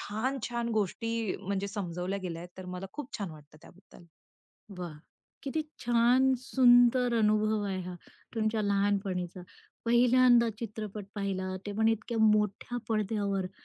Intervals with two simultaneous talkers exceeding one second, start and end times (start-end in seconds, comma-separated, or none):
none